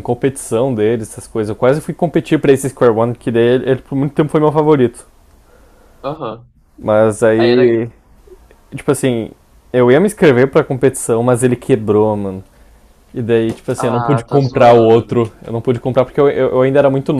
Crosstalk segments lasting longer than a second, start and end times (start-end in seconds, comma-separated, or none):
13.8-15.1